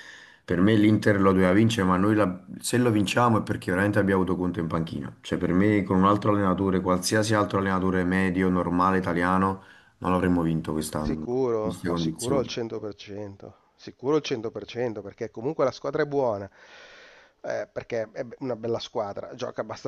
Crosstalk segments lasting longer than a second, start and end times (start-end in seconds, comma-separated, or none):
11.0-12.5